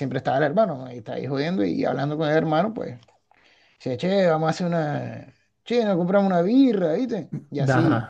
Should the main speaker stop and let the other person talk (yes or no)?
no